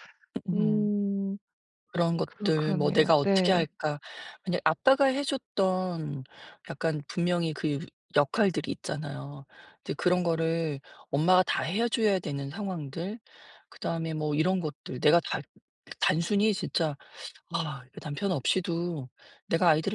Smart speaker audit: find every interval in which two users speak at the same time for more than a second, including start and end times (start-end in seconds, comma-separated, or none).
2.2-3.7